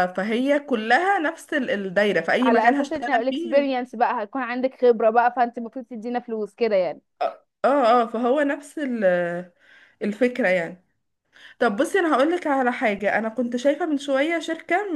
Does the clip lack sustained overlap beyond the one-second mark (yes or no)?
no